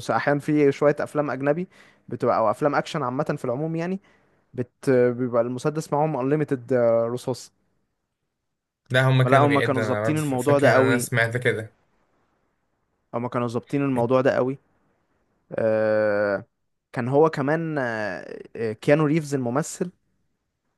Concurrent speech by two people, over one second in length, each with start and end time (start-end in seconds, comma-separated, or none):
9.2-11.1